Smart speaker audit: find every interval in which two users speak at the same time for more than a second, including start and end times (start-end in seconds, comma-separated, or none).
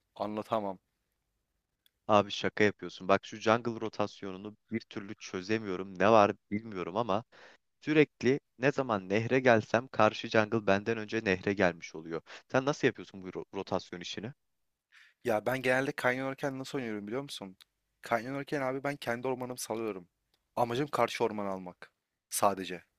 none